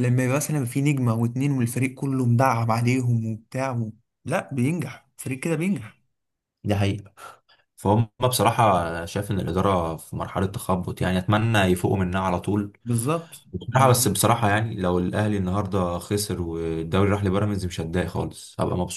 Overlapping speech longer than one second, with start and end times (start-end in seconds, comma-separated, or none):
none